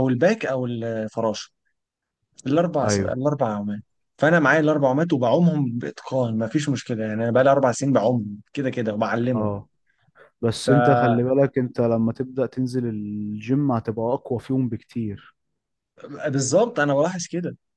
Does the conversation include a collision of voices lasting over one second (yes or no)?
no